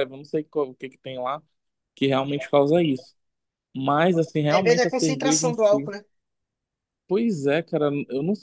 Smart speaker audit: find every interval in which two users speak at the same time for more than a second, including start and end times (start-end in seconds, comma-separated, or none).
4.5-5.9